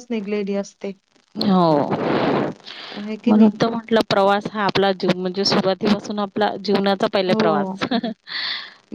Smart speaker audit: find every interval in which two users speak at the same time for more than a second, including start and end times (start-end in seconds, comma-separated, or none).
none